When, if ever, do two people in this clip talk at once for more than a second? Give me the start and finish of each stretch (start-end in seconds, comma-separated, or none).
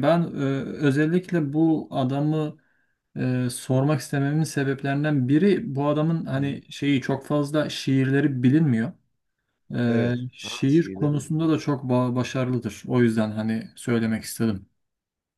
9.9-11.5